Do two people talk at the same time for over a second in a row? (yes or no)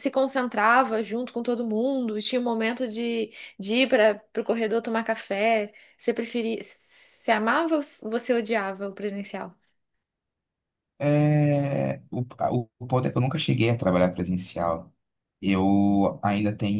no